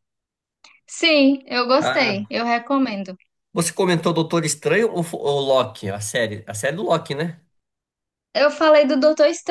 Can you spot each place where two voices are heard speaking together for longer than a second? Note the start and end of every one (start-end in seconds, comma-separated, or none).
none